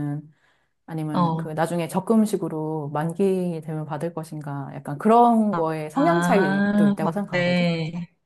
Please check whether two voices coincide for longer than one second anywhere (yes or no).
yes